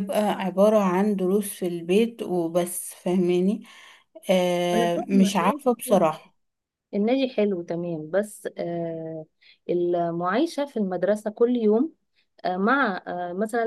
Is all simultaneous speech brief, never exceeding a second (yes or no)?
no